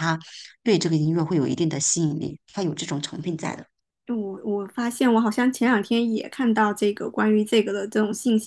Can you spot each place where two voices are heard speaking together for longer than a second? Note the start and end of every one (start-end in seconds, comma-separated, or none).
none